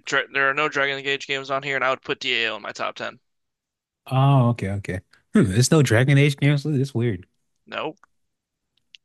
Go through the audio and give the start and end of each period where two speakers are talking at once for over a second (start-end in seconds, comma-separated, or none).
none